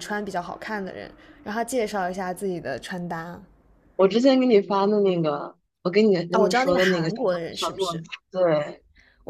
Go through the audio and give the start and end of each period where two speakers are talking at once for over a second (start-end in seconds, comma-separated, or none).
6.3-8.0